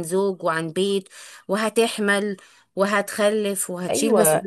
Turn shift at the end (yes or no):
yes